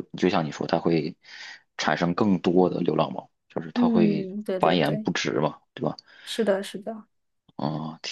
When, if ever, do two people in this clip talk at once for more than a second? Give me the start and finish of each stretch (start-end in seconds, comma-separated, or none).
3.7-5.1